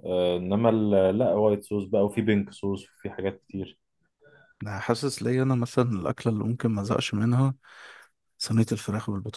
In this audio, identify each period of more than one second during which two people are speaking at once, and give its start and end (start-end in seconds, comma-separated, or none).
none